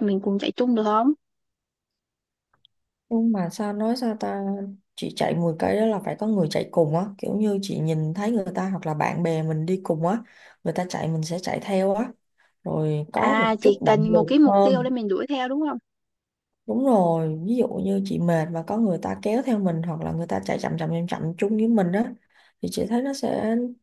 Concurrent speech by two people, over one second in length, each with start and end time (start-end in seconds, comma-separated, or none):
13.2-14.9